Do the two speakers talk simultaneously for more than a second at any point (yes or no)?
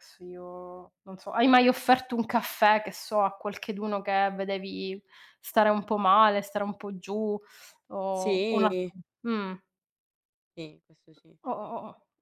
no